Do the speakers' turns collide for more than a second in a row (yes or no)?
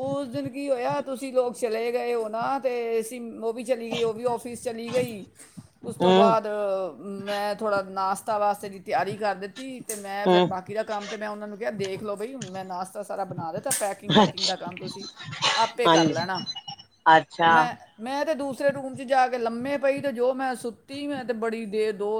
no